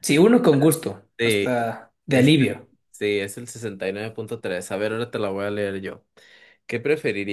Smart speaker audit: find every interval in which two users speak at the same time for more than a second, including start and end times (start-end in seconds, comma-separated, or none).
none